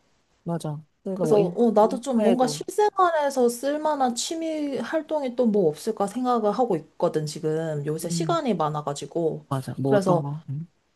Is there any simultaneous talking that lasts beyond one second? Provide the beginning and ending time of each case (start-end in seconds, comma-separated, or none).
1.1-2.6